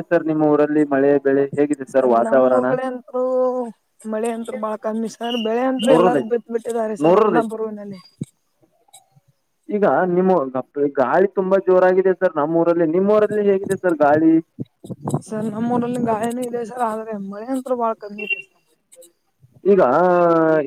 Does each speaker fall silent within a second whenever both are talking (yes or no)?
yes